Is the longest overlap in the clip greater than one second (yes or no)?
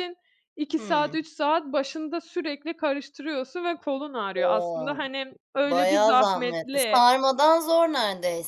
yes